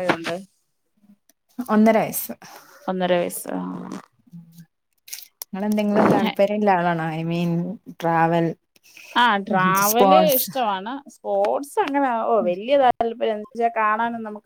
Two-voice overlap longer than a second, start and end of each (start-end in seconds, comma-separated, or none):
none